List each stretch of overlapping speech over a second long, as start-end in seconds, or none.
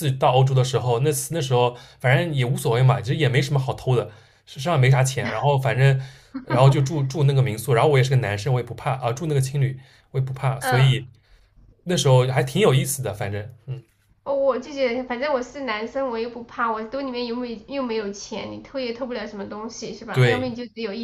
none